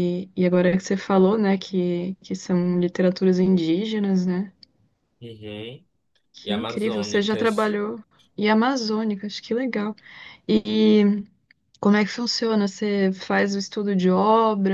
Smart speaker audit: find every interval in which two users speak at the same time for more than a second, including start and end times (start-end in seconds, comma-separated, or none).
6.4-7.7